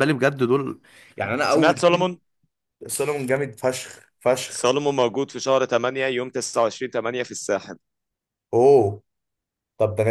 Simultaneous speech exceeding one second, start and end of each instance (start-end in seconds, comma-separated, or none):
none